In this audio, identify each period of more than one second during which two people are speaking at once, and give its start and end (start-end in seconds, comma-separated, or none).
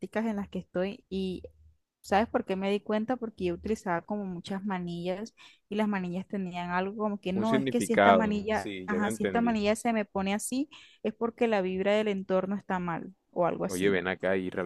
7.3-9.6